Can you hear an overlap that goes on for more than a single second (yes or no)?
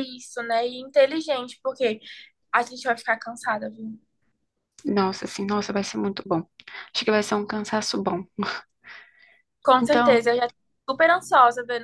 no